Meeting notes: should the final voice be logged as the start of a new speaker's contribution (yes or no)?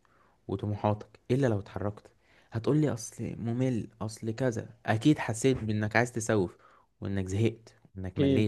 yes